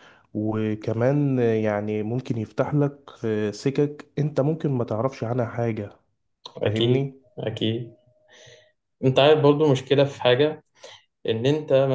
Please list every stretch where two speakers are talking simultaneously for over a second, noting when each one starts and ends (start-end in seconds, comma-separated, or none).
none